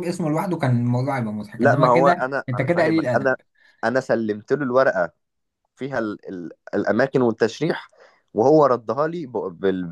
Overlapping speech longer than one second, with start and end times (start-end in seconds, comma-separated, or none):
1.6-3.4